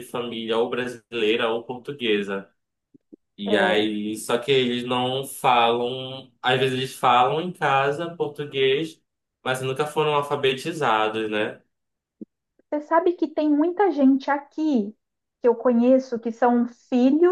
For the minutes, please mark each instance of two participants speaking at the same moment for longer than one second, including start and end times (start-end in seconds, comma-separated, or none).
none